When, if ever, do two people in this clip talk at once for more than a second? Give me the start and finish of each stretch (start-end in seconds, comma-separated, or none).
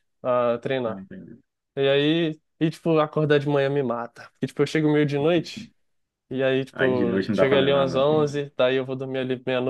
6.7-8.0